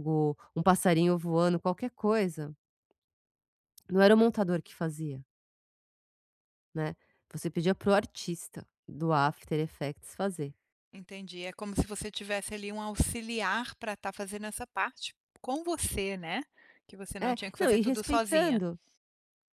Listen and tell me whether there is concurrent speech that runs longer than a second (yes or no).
yes